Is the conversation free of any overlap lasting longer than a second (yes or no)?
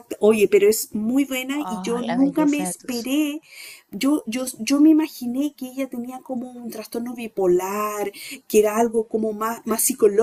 no